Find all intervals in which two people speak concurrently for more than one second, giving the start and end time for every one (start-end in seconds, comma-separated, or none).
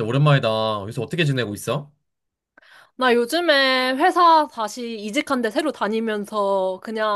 none